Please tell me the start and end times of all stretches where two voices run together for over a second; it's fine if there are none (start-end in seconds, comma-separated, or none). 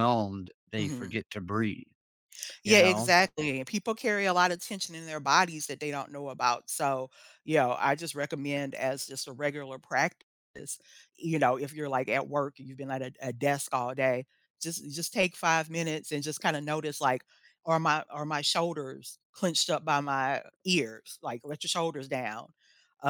none